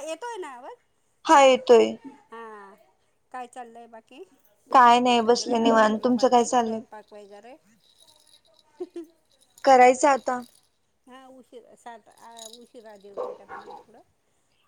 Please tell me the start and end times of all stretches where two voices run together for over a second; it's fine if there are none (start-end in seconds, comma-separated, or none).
4.9-6.8